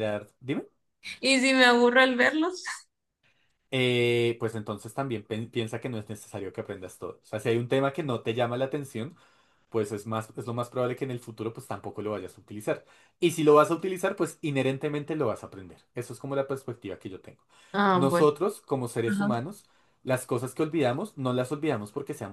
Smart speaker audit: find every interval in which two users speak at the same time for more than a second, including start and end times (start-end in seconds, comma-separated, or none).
none